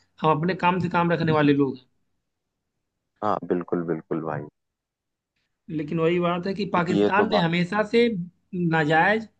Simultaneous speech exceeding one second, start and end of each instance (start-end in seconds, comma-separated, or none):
none